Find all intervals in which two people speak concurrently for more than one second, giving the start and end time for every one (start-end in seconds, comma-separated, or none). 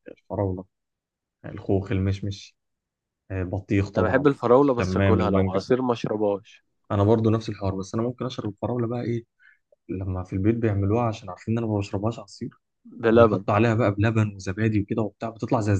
4.0-5.6